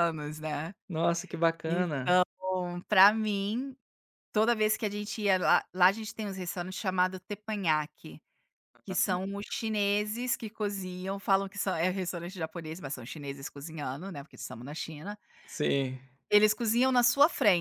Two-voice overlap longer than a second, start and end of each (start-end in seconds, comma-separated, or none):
none